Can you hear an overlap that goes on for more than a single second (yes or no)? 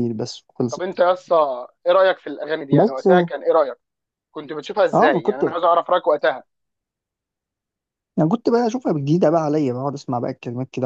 no